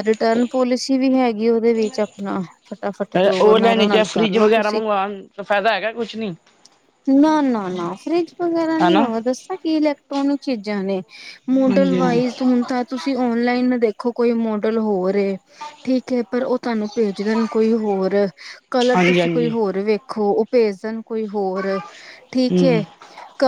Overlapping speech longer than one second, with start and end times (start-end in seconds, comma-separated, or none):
3.4-4.8